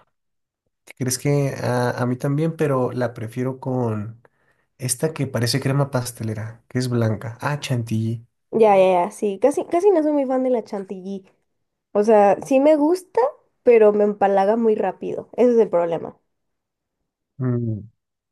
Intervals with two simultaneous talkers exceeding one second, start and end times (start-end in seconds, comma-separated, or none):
none